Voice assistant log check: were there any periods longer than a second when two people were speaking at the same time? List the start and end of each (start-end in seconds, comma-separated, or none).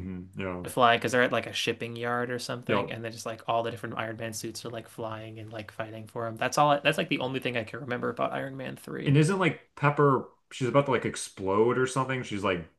none